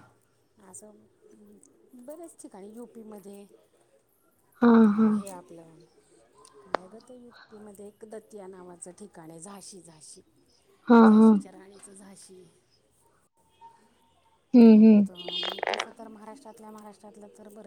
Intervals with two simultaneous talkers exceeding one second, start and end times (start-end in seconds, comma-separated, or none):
none